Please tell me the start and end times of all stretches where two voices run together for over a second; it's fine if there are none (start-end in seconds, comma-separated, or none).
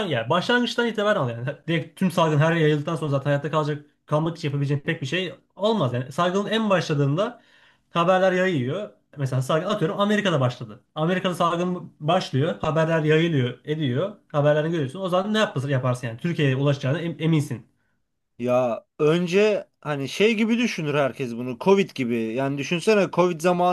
none